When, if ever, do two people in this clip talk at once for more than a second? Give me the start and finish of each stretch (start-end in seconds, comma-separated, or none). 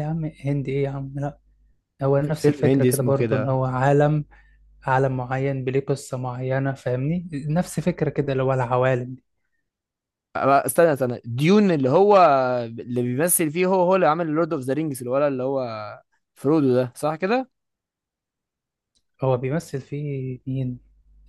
2.2-3.6